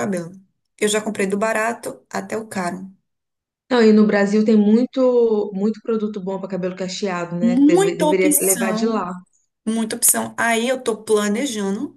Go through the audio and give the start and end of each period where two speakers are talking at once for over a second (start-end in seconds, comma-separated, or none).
7.4-9.0